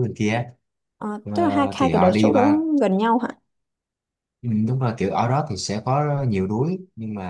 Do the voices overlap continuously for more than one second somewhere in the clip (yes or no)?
yes